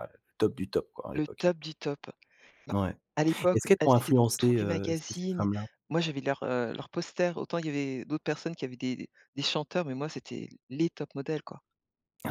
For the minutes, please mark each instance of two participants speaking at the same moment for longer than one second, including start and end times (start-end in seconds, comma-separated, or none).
3.5-5.5